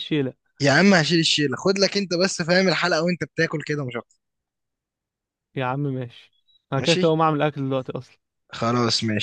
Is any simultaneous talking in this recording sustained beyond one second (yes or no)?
no